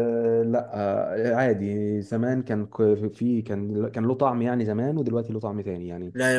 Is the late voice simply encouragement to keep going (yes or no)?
no